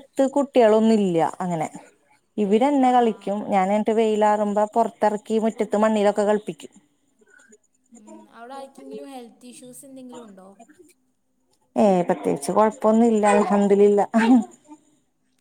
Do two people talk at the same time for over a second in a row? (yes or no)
no